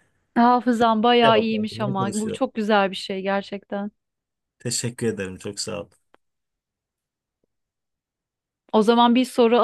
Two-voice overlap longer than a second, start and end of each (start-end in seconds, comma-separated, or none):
1.2-2.4